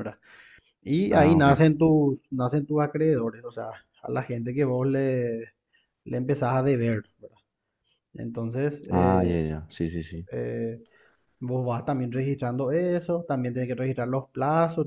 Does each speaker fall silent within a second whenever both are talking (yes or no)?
yes